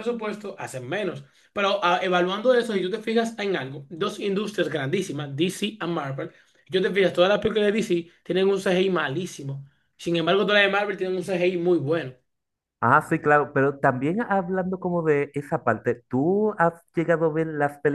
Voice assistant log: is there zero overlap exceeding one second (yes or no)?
yes